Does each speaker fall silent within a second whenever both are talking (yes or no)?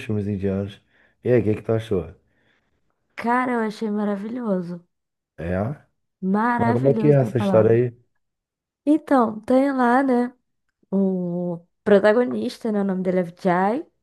no